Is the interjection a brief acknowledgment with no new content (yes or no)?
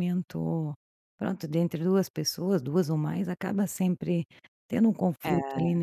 yes